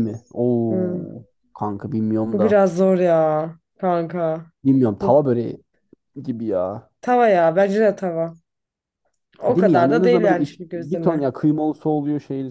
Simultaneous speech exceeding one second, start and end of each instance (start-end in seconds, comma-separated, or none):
9.5-11.3